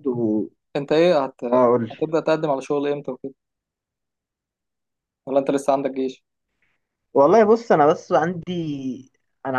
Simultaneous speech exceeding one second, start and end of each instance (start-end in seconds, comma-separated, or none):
none